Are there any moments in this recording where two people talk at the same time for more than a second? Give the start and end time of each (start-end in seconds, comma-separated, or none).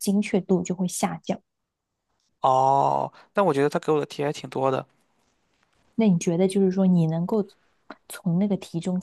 none